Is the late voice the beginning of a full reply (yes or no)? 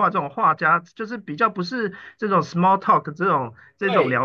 no